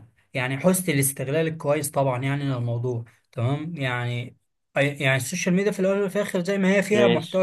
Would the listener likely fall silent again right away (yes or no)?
yes